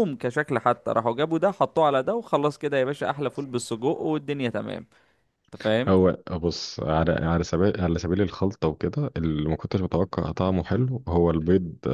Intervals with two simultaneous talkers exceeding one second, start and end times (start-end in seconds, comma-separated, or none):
none